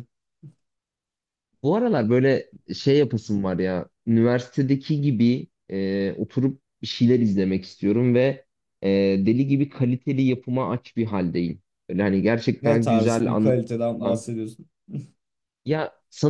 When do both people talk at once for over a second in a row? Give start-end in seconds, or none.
12.6-14.2